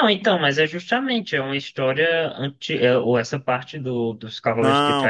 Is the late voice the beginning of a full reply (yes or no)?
yes